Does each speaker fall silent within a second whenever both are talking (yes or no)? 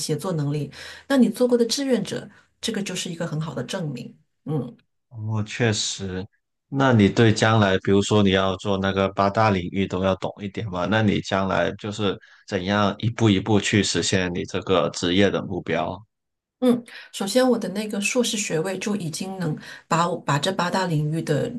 yes